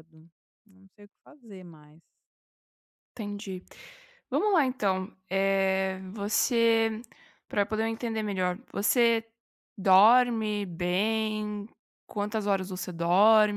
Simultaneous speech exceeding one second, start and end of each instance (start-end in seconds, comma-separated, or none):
none